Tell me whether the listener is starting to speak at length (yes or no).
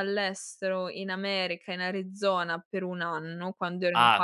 yes